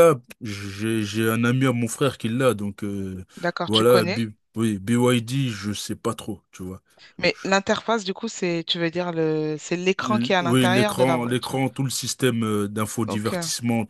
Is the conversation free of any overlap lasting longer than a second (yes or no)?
no